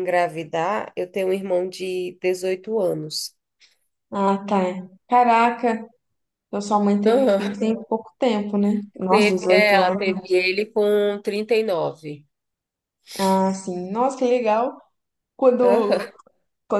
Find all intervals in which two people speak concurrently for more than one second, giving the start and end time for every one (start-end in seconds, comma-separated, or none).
9.1-10.4